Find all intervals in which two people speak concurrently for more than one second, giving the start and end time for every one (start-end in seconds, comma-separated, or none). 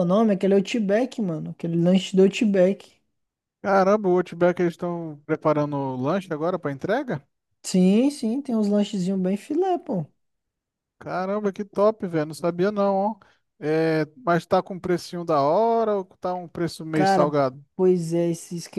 none